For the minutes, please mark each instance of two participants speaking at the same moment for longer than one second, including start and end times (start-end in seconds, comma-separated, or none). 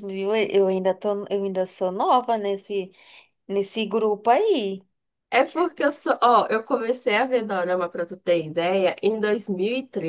none